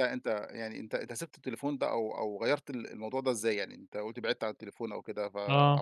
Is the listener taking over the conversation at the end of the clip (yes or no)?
no